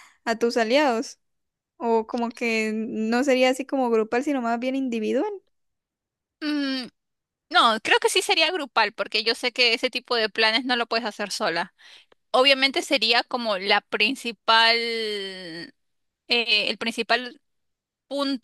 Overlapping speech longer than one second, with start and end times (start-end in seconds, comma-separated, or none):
none